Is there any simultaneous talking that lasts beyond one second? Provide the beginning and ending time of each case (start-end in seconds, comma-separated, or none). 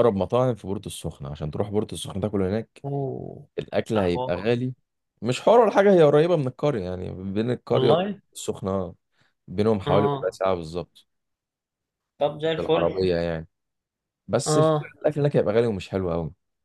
none